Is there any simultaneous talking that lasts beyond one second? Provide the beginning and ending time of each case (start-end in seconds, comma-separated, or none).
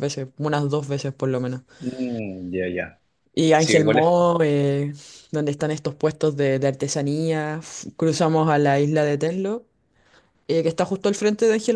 none